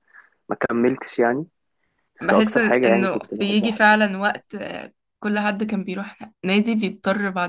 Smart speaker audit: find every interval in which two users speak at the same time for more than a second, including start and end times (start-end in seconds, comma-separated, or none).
2.3-3.8